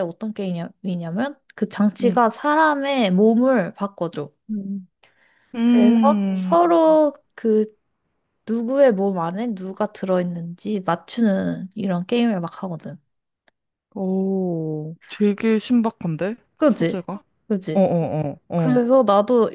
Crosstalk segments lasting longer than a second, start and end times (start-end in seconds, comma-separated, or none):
5.7-7.0